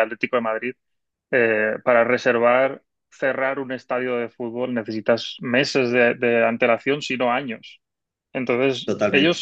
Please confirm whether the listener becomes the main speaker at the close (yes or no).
no